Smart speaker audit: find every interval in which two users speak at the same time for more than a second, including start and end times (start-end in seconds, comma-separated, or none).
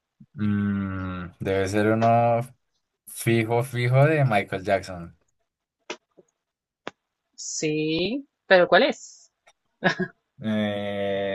none